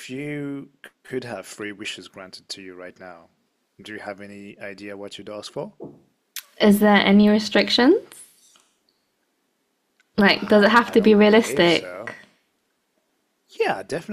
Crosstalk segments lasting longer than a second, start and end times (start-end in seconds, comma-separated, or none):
10.3-12.1